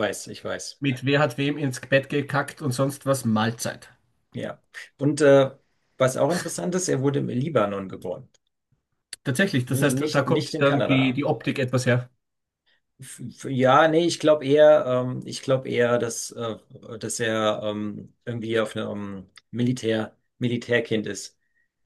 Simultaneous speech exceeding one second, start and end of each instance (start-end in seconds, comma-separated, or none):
9.7-11.2